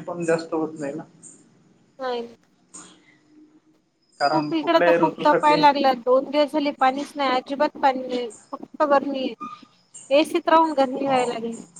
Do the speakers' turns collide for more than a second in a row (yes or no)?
yes